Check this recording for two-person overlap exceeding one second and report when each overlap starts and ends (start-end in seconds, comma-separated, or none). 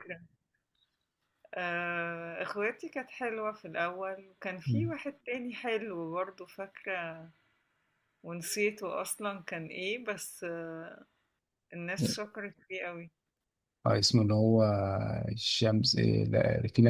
none